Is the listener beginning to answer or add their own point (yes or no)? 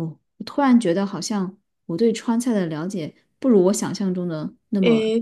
yes